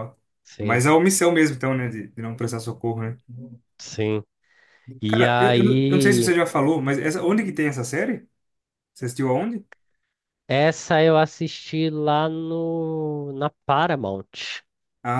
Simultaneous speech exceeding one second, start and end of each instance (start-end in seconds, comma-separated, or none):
5.1-6.3